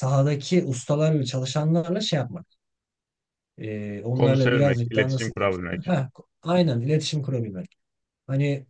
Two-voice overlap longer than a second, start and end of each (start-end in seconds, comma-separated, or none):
4.1-5.9